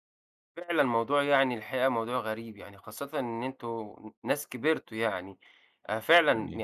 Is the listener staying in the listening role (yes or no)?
yes